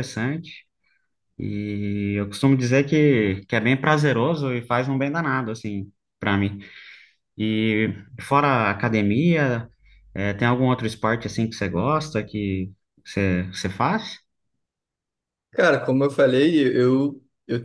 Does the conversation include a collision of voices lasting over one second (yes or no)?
no